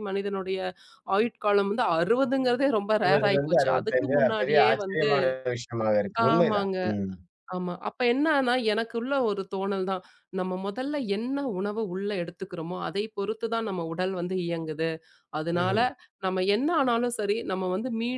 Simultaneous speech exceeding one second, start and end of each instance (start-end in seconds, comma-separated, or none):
3.0-5.1